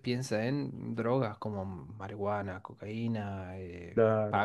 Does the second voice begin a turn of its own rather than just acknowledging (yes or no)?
no